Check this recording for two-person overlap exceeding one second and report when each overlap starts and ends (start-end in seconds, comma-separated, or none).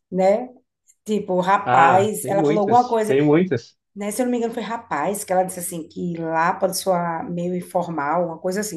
1.6-3.2